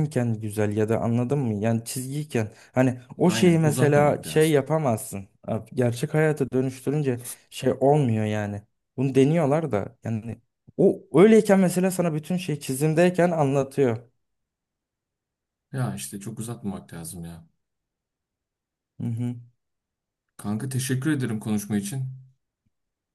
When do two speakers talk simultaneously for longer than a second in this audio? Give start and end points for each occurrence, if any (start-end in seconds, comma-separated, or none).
3.2-4.6